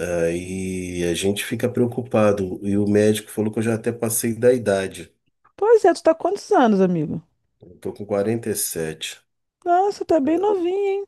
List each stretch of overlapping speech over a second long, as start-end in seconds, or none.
none